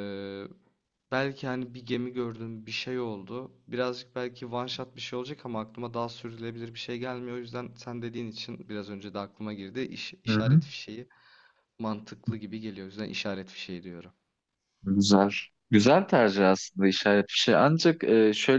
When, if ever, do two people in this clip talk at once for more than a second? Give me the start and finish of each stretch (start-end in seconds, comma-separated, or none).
none